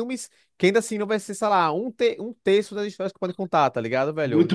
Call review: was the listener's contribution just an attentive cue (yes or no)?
no